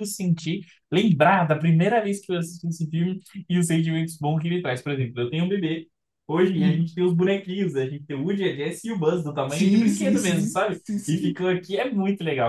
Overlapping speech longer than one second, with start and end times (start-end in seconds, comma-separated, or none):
9.5-11.4